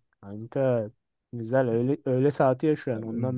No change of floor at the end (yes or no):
no